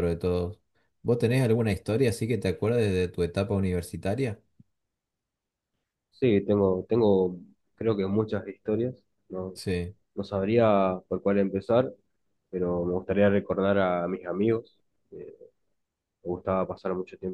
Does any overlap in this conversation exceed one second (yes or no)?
no